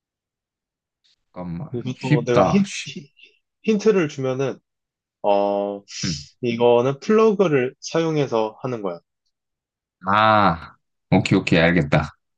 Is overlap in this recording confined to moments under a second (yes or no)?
no